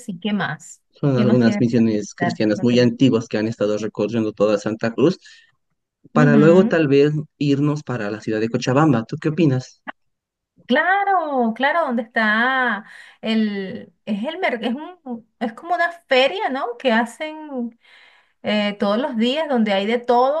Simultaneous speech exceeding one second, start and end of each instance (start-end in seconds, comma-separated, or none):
1.0-2.9